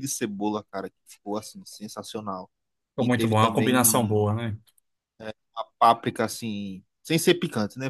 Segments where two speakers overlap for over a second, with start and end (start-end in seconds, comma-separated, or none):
3.0-4.2